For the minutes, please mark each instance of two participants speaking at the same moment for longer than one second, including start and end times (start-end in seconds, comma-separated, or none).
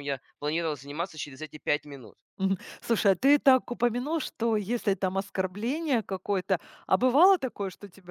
none